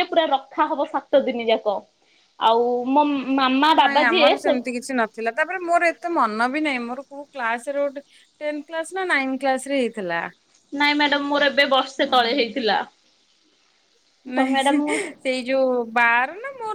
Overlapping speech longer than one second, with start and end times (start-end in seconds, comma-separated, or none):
none